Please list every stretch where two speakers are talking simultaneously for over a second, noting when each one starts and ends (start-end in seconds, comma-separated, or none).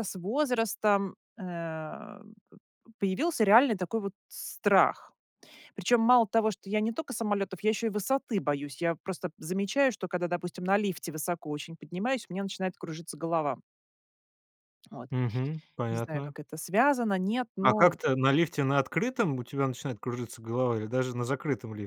none